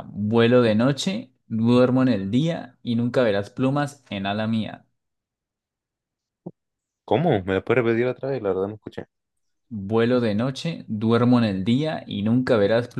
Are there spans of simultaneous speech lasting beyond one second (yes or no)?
no